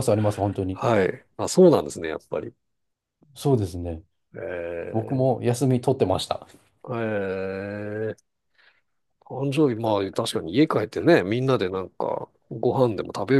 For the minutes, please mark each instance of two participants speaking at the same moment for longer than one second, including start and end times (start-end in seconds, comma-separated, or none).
none